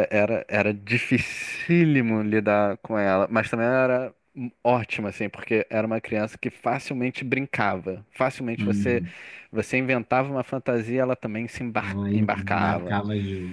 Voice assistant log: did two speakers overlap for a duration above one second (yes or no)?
yes